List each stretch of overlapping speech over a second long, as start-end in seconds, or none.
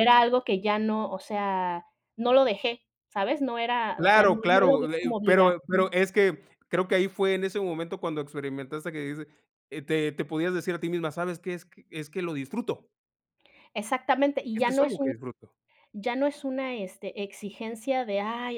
4.0-5.9